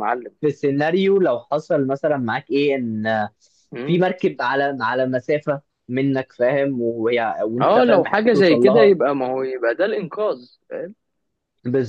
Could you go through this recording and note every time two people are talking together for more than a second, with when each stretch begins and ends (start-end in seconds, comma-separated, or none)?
7.6-8.9